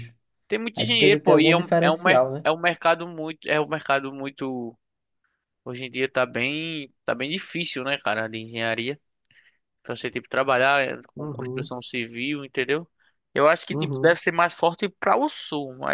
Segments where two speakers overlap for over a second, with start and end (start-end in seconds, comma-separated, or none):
0.8-2.5